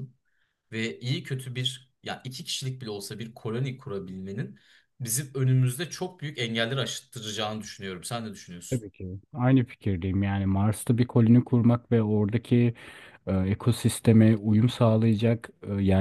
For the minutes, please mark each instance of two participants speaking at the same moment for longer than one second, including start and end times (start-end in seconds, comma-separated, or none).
none